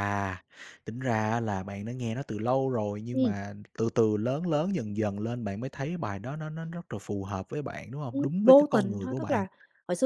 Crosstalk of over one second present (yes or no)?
yes